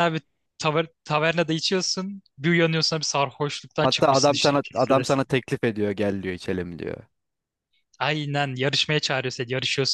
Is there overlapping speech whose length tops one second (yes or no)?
yes